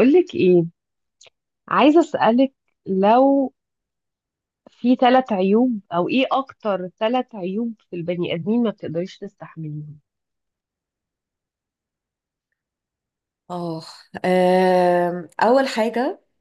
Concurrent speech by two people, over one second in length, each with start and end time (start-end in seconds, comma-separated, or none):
none